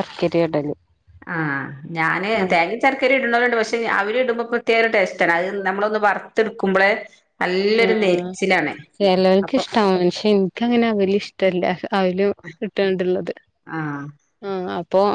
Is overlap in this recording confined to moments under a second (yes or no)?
yes